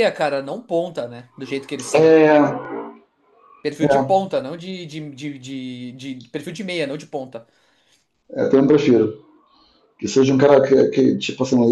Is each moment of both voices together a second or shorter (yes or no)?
yes